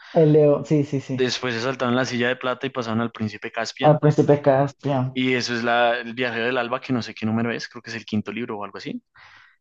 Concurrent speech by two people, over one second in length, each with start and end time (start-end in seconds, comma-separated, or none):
none